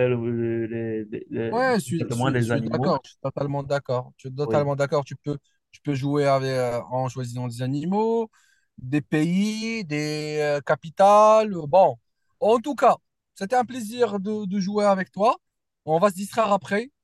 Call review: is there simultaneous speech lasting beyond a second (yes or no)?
yes